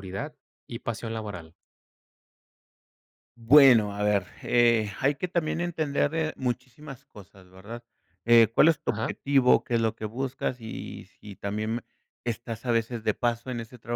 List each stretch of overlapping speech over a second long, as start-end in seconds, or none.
none